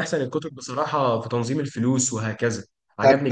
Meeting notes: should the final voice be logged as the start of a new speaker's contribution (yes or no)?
yes